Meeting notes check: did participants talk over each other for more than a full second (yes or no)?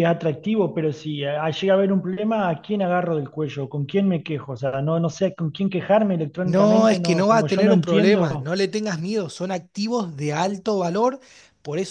yes